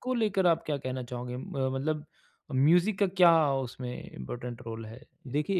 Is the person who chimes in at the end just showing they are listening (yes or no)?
no